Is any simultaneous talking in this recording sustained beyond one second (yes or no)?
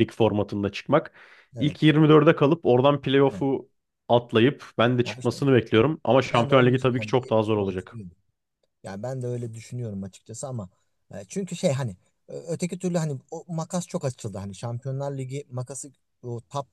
yes